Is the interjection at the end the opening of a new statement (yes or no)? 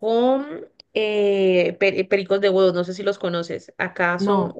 no